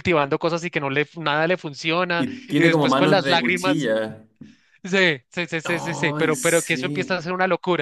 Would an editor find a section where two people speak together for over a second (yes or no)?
yes